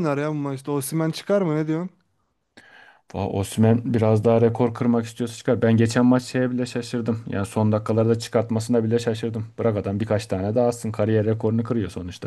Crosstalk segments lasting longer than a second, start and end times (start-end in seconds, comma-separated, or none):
none